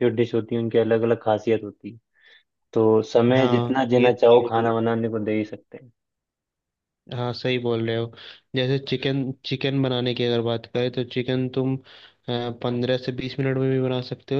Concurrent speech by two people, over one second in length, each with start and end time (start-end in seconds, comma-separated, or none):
3.4-4.7